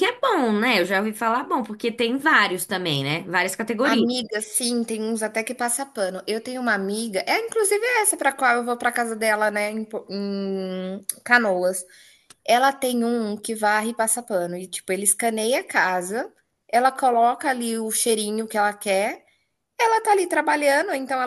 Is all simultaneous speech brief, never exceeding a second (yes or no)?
yes